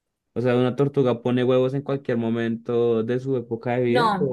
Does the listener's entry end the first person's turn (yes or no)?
yes